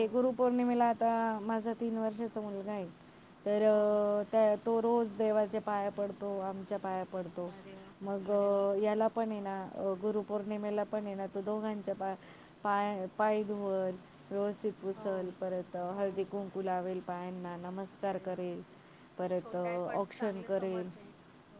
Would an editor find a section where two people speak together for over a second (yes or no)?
yes